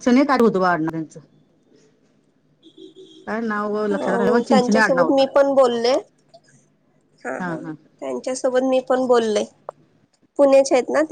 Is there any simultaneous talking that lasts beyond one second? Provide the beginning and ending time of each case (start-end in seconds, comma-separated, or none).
3.9-5.2